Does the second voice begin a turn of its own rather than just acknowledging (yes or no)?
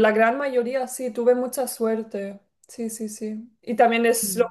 no